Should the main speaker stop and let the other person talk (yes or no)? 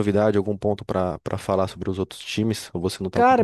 yes